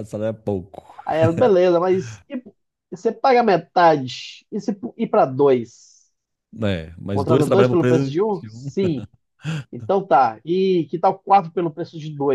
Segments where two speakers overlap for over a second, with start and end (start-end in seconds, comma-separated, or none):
7.1-8.7